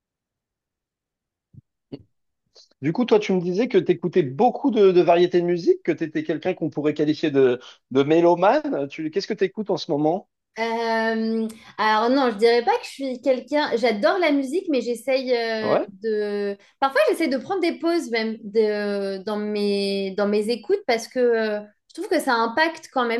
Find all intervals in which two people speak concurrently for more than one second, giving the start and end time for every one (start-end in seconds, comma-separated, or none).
none